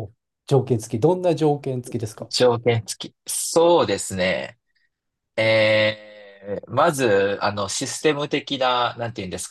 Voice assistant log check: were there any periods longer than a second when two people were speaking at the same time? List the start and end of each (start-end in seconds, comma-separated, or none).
none